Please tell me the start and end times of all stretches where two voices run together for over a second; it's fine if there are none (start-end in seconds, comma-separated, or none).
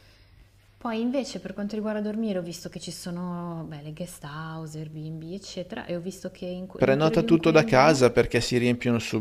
6.8-8.0